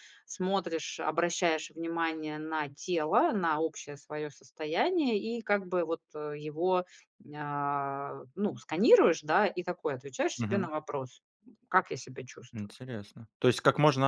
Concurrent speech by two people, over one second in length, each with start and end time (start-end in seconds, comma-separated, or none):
none